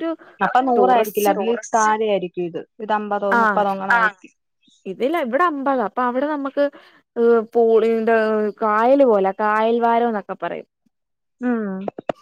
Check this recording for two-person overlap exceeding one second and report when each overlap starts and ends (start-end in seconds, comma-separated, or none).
none